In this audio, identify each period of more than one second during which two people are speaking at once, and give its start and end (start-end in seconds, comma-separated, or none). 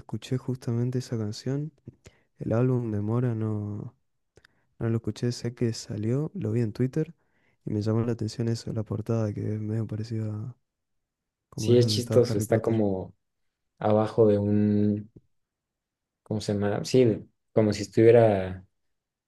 11.6-12.8